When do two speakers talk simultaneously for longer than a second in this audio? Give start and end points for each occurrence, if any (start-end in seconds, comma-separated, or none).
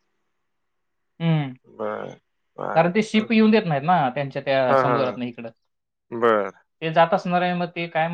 none